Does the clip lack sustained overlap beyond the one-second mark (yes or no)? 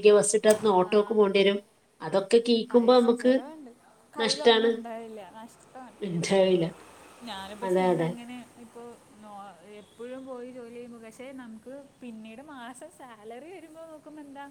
yes